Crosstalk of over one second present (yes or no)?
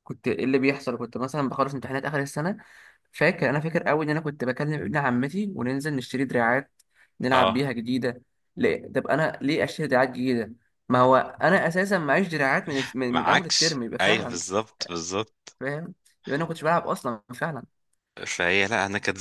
yes